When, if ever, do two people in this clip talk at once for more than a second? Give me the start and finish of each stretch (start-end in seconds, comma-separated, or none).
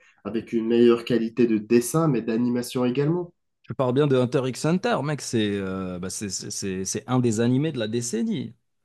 none